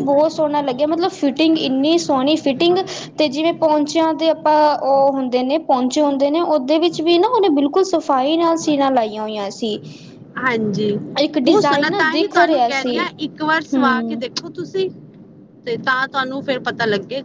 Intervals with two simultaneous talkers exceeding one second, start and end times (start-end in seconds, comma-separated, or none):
11.4-13.0